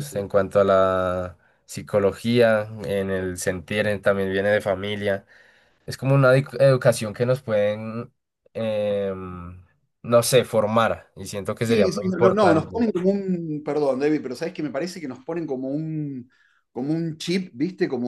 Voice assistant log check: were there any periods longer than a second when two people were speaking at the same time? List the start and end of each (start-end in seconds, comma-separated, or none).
11.6-12.9